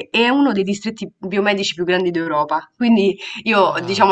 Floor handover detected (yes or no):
no